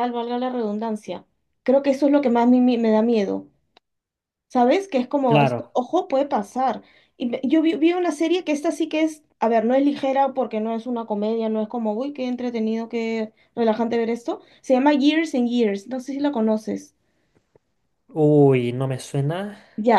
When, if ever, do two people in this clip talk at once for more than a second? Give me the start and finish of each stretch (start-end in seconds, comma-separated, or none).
none